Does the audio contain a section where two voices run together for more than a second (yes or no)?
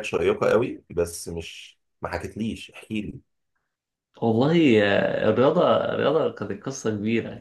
no